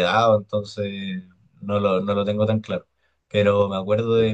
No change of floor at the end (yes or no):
yes